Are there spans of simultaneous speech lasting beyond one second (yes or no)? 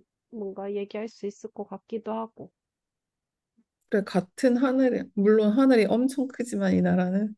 no